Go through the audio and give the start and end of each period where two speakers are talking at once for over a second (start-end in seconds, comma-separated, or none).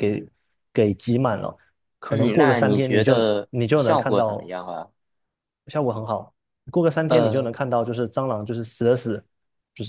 2.1-4.5